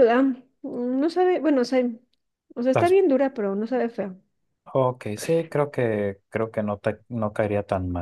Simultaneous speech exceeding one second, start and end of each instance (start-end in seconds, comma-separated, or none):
none